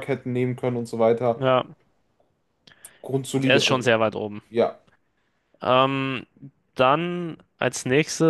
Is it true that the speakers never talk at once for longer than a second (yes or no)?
yes